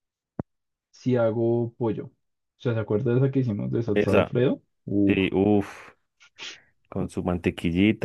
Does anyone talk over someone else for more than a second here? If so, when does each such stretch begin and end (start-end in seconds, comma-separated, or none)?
none